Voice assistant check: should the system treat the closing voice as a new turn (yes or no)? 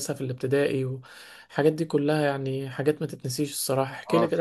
yes